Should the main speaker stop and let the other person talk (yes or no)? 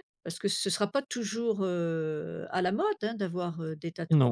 yes